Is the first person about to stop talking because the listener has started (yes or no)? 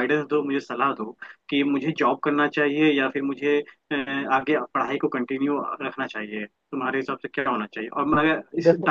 no